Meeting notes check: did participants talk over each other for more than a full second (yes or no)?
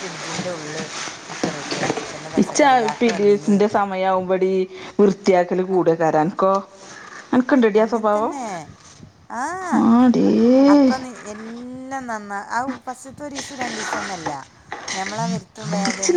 no